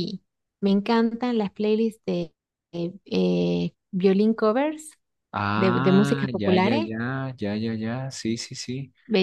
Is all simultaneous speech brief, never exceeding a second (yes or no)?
no